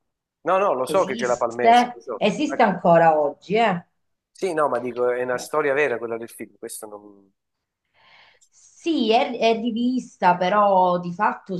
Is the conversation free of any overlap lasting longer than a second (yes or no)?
no